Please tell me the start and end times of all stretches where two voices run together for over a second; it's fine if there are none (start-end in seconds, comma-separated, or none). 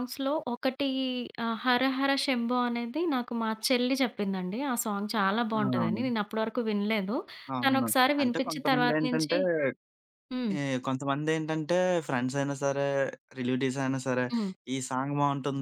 7.6-9.3